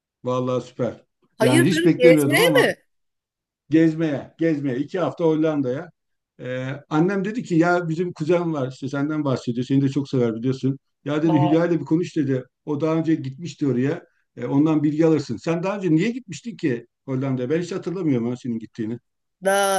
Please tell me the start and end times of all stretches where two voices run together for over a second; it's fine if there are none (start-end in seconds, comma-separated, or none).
1.4-2.7